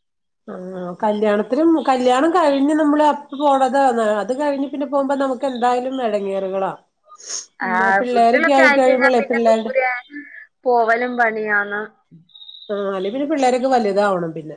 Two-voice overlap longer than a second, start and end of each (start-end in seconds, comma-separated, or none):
8.0-9.7